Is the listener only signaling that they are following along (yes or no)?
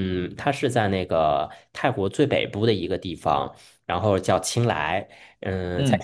yes